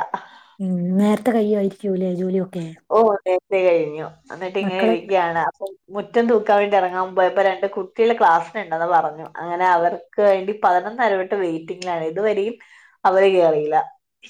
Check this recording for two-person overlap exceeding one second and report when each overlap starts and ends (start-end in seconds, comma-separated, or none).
none